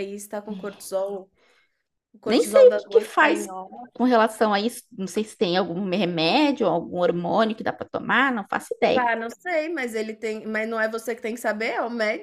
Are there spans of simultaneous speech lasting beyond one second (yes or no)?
yes